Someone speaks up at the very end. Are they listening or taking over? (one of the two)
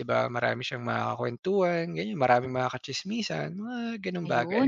taking over